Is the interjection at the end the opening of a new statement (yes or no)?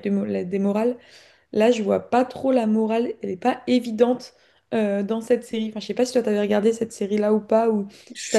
yes